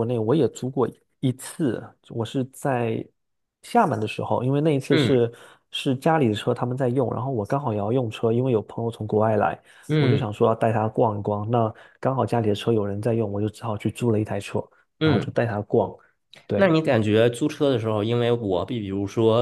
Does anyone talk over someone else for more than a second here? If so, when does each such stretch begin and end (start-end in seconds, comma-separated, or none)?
none